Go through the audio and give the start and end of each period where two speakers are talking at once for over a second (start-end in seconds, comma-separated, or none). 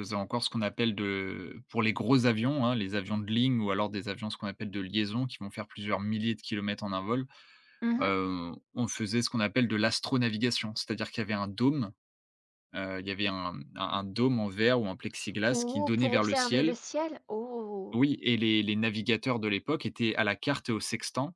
15.5-16.8